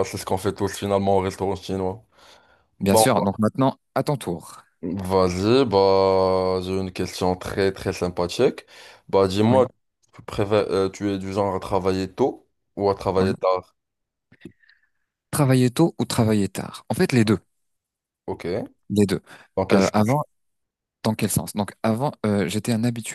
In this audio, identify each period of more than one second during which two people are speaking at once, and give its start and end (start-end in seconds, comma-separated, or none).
none